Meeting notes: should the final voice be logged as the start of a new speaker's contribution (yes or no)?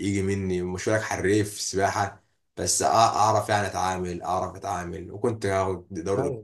no